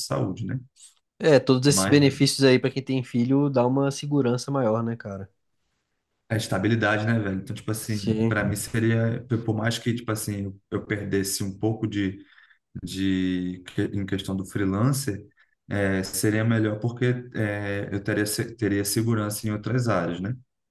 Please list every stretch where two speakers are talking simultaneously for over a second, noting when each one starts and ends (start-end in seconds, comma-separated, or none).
none